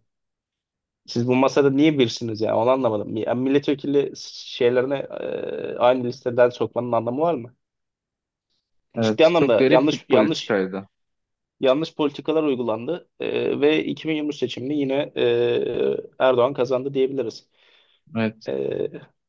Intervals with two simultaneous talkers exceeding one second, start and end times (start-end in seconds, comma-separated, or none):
9.0-10.6